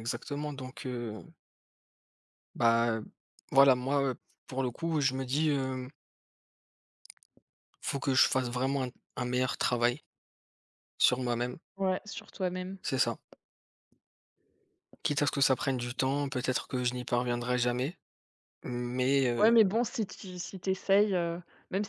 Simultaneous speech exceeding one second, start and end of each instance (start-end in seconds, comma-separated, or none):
none